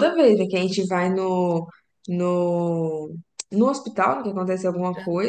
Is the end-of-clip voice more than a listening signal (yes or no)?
no